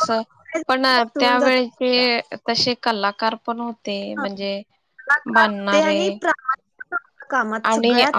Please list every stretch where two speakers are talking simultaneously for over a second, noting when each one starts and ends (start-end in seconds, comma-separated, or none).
0.7-2.2